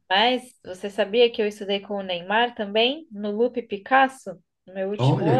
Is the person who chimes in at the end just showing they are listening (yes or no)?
no